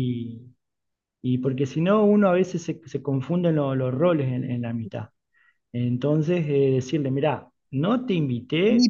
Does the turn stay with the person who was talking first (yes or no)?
no